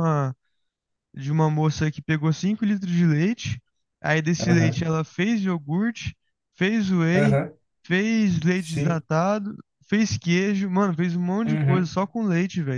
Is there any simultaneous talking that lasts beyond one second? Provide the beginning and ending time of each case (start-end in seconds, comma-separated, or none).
none